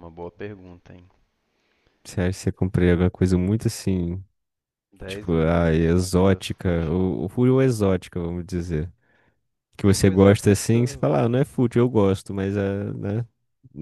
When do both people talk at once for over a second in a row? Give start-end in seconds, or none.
5.1-7.0, 9.8-11.2